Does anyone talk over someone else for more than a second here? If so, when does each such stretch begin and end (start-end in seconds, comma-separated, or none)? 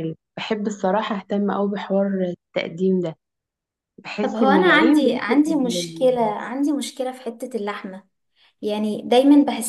4.2-6.2